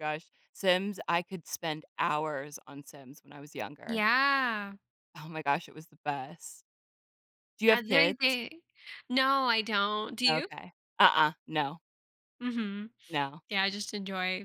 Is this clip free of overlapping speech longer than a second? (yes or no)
yes